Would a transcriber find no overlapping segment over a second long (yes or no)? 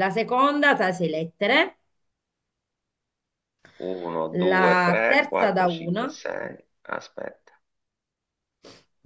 no